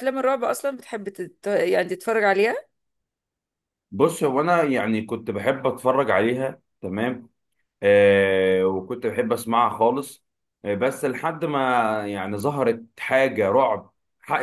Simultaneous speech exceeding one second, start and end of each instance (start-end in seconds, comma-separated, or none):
none